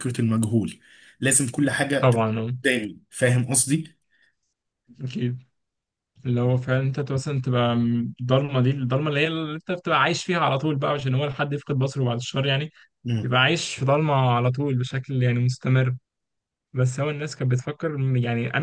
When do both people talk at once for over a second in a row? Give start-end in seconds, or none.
none